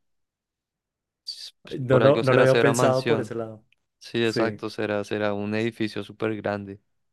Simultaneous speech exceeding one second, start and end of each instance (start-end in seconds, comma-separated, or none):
1.8-3.3